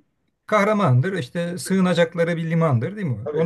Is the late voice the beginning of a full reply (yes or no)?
no